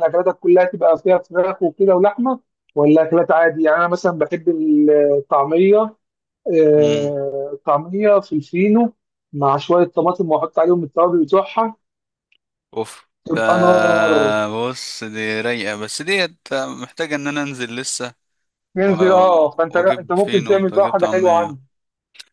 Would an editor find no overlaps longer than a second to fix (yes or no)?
no